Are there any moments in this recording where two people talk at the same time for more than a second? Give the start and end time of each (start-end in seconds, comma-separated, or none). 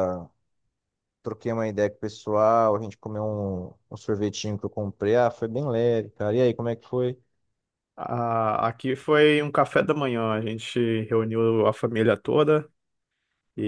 none